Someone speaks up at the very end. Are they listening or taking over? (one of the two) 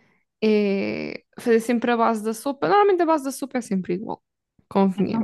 taking over